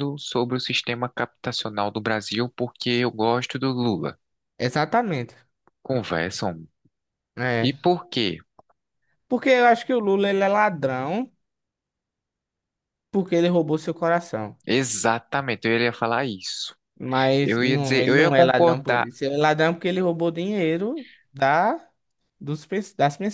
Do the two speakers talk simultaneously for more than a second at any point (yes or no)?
yes